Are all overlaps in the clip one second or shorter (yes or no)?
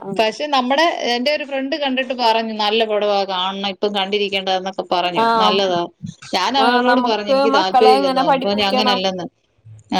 no